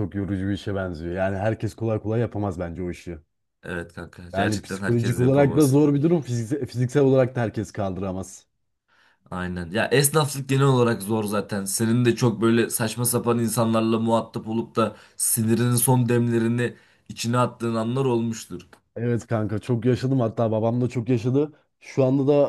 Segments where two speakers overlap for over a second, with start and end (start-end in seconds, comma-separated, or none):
4.3-5.7